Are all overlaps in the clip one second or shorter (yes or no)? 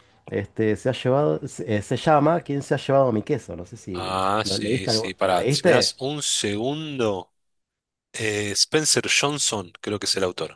no